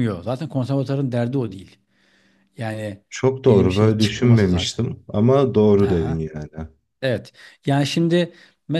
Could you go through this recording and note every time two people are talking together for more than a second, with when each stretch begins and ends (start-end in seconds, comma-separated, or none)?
3.4-4.8